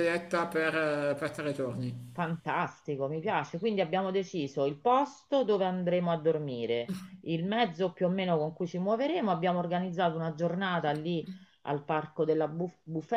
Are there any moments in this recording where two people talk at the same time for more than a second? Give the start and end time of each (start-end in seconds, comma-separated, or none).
none